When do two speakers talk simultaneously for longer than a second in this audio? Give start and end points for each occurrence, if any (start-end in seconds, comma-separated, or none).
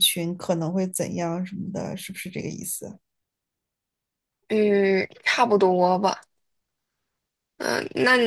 none